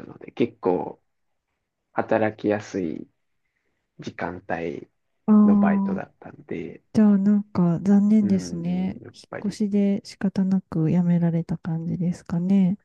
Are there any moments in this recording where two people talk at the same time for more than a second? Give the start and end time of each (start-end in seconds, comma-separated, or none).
8.2-9.6